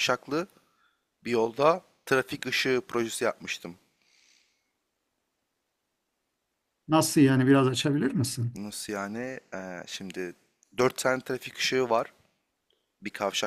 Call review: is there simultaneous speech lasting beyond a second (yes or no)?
no